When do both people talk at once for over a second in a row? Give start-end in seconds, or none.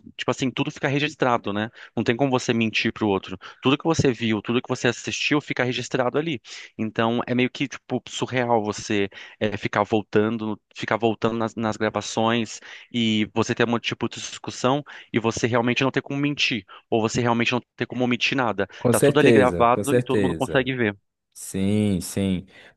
18.8-20.7